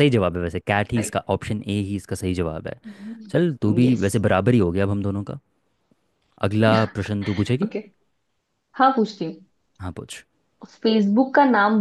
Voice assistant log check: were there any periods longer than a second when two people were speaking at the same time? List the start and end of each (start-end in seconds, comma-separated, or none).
none